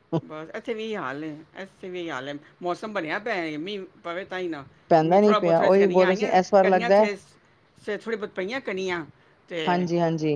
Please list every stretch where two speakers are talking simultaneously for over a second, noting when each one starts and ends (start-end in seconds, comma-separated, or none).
5.0-7.1